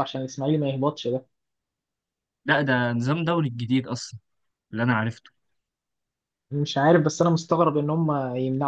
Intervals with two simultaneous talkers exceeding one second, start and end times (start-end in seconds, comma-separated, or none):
none